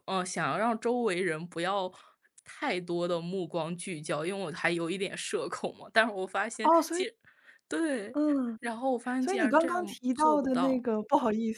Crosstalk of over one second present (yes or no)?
yes